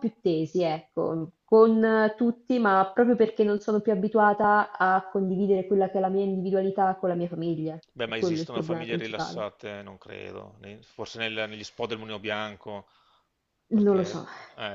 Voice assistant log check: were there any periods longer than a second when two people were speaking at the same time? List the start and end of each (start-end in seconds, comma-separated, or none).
7.9-9.5